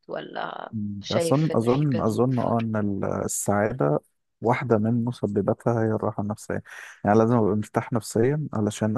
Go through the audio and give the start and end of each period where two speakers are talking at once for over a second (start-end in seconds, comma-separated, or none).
0.7-2.6